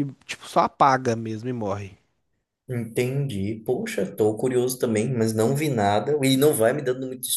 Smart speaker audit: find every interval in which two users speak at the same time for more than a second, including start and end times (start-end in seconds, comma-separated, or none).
none